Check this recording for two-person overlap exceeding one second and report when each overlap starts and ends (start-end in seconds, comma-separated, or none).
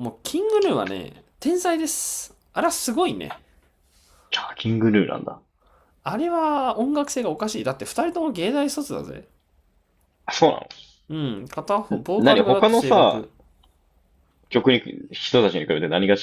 11.9-13.3